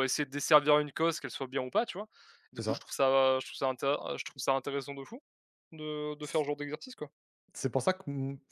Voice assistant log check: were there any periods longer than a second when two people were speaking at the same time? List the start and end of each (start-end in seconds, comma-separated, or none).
none